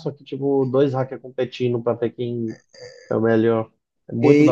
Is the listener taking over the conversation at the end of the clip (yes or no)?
yes